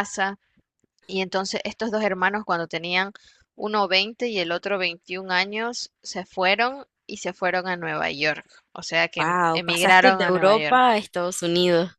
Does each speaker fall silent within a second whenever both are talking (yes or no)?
no